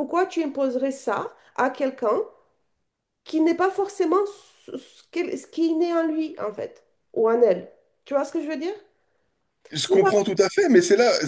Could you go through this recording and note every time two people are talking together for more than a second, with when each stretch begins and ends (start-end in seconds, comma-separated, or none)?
none